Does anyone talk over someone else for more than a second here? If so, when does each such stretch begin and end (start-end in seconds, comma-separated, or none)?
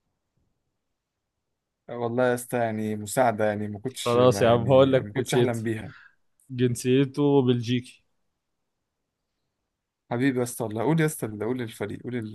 4.0-5.6